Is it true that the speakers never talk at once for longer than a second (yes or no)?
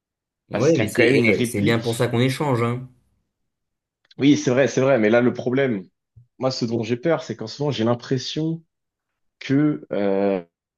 no